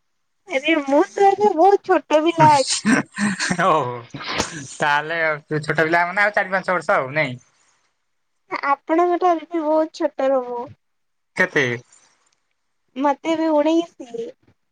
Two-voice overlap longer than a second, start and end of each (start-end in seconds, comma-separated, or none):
none